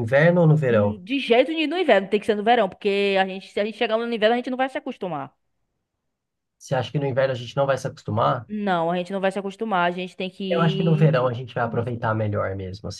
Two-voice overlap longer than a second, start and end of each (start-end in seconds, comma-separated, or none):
10.5-12.0